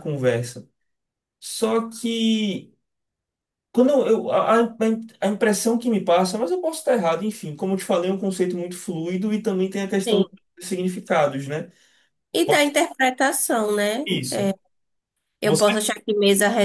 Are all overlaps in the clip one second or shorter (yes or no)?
yes